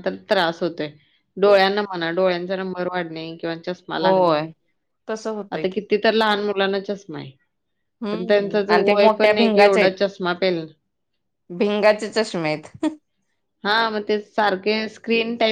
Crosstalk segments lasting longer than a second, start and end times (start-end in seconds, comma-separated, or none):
8.0-9.9